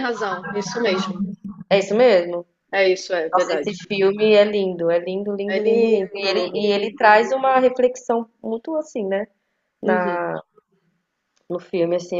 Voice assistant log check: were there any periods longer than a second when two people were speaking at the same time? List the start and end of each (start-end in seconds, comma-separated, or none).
5.5-7.0